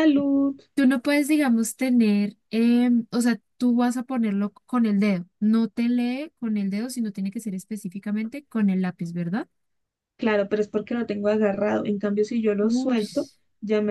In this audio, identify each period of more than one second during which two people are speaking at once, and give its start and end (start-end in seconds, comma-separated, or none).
none